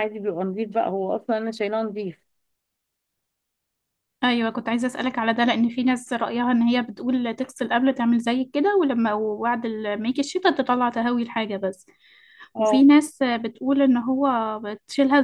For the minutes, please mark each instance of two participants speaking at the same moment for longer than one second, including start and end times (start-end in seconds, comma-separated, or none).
none